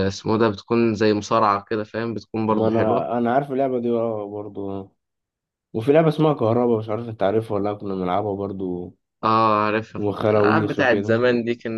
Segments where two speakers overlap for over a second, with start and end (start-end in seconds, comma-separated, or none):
10.0-11.2